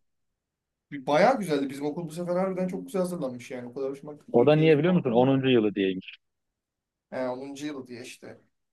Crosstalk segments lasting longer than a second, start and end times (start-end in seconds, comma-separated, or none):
4.3-5.5